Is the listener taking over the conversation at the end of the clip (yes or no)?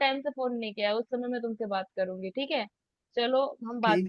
yes